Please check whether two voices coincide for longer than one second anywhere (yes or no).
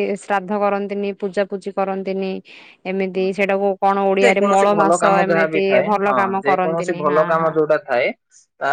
yes